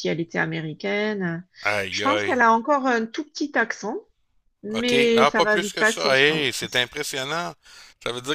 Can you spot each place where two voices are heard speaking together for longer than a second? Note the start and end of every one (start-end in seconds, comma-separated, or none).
4.7-6.8